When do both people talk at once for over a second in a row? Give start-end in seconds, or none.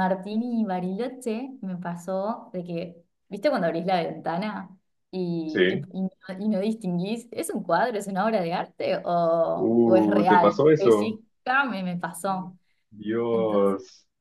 9.6-11.2